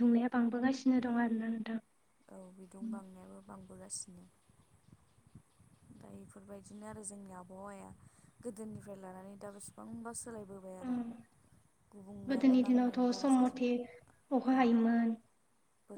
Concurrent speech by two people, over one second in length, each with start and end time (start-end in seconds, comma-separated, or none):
12.3-13.7